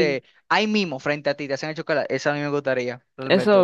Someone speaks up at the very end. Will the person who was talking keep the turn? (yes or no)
no